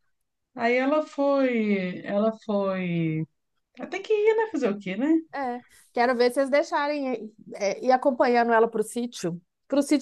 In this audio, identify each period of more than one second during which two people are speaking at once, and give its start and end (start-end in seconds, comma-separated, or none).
none